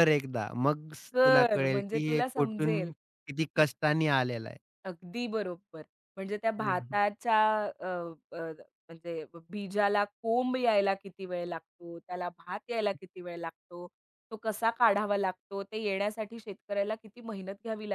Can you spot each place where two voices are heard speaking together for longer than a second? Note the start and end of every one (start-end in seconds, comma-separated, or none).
1.1-2.9